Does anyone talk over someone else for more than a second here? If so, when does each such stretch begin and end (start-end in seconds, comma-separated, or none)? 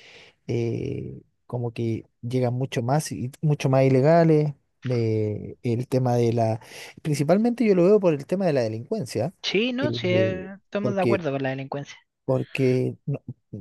9.8-11.2